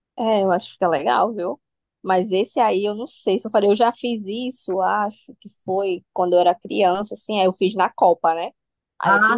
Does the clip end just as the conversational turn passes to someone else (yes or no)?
no